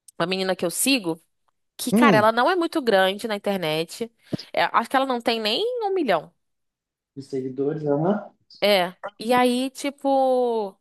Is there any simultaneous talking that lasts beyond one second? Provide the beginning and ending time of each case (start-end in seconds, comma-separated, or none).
none